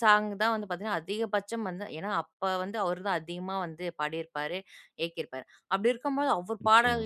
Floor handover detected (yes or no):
no